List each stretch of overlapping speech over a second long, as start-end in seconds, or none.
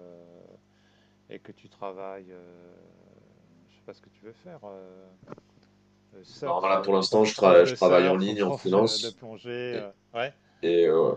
6.5-9.2